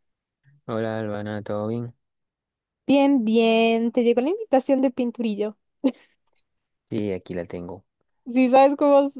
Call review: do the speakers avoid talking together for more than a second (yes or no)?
yes